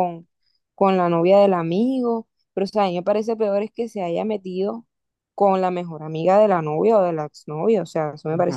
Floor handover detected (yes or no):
yes